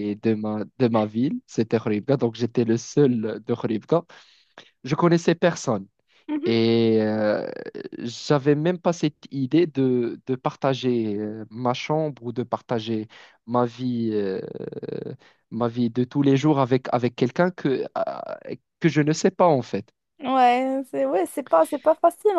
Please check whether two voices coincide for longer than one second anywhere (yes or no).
no